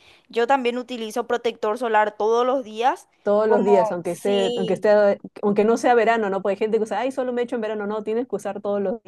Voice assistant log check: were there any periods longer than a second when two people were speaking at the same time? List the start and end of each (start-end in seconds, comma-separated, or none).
3.5-4.9